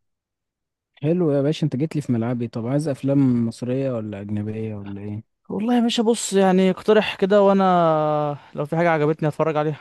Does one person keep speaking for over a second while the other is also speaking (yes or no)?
no